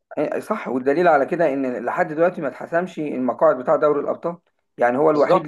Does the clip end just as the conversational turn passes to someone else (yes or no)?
no